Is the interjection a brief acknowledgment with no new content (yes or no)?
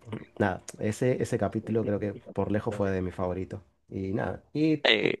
yes